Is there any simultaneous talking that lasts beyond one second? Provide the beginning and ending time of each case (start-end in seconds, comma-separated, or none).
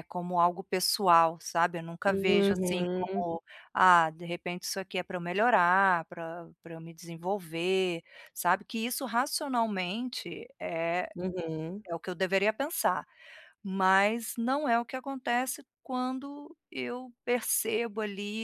2.1-3.3